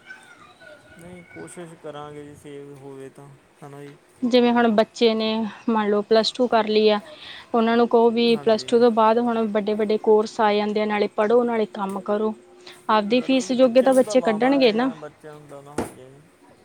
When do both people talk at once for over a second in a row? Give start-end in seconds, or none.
13.2-14.9